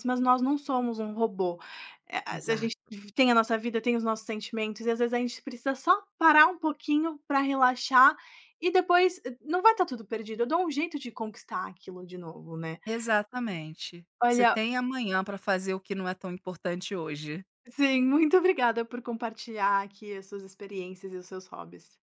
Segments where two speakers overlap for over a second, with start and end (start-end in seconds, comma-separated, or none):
none